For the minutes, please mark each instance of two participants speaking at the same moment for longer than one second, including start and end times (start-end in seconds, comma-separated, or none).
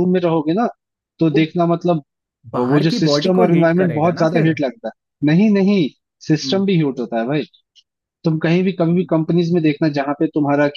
2.7-4.5